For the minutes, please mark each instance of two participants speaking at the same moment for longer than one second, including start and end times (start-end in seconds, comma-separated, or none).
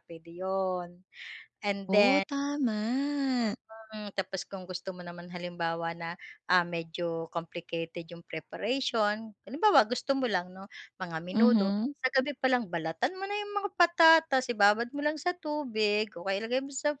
none